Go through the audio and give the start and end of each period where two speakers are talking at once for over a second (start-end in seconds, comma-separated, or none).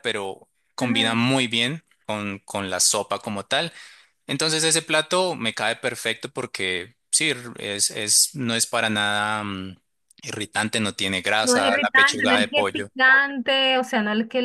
11.4-12.9